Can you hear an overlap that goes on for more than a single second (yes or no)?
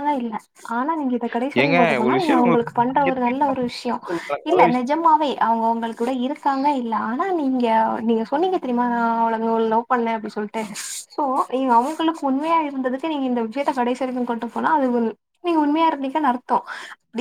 yes